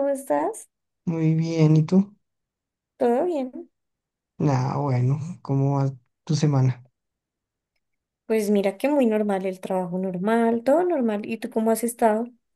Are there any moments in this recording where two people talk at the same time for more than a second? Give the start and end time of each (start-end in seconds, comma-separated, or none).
none